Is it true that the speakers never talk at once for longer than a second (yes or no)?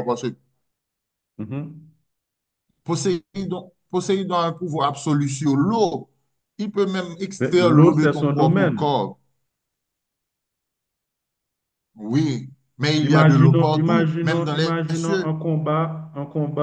no